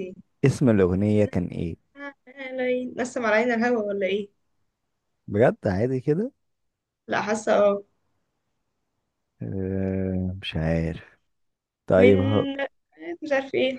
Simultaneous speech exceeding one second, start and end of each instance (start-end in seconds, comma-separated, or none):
none